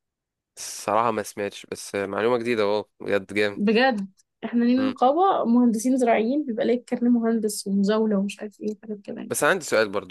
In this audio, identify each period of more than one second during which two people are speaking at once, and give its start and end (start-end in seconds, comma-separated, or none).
none